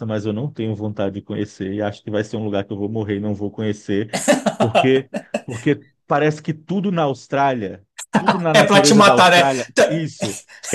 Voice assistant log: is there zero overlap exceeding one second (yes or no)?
no